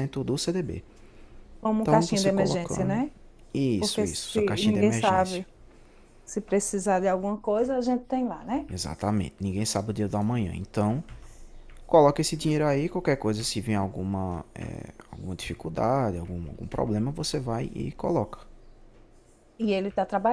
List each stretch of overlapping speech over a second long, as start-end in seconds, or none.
1.8-3.0, 3.8-5.4